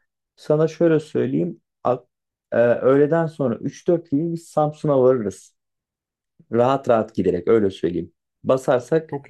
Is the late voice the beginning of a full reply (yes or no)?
no